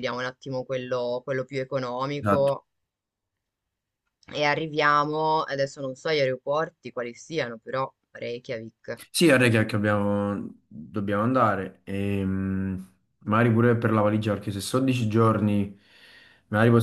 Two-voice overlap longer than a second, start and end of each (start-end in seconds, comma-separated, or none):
none